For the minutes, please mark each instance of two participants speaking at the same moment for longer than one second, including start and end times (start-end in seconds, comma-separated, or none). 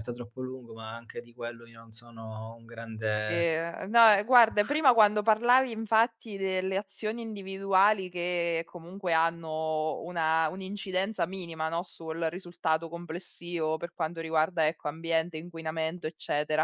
none